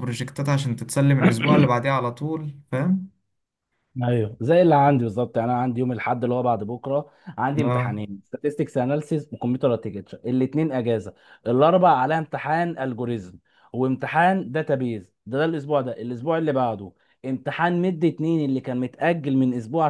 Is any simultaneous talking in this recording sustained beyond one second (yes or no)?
no